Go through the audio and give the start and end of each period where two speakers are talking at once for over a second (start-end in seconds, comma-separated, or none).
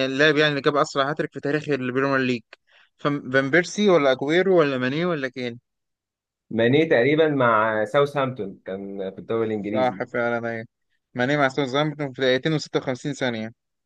none